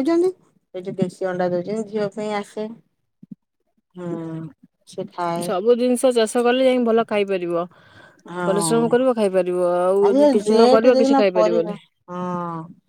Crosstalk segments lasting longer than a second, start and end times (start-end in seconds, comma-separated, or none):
10.1-11.8